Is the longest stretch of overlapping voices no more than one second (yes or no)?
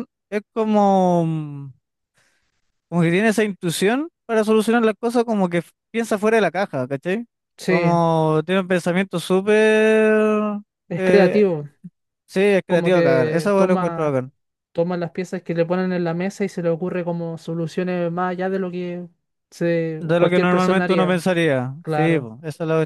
no